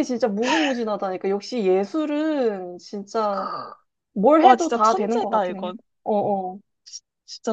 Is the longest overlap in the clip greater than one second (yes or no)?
yes